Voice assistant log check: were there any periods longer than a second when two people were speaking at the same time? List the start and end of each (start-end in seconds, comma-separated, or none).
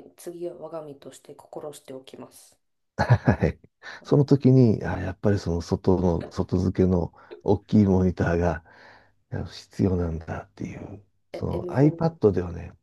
10.7-12.2